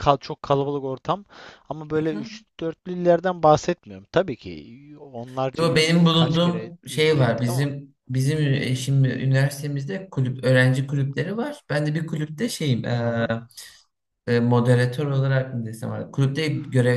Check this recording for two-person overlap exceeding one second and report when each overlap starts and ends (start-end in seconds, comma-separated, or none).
5.6-7.7